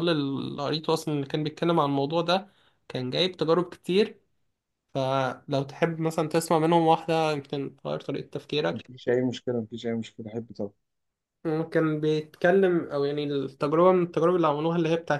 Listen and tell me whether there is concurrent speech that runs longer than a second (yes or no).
no